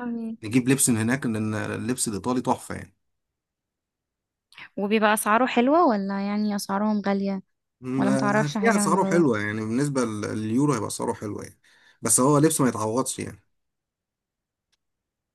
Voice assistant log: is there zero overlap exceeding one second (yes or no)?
no